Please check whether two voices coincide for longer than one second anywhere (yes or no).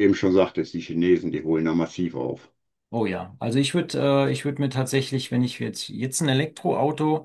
no